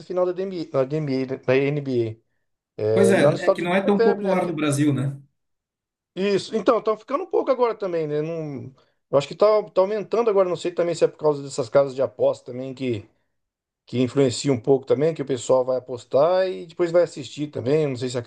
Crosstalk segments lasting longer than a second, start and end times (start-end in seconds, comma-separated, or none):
2.9-4.6